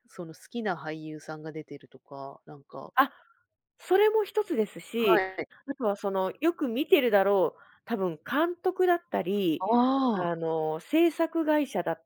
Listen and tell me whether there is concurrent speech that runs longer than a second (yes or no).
no